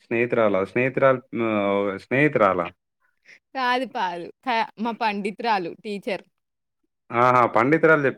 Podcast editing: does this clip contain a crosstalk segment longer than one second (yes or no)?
no